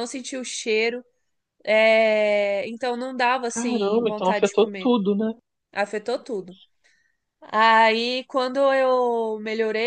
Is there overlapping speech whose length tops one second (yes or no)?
yes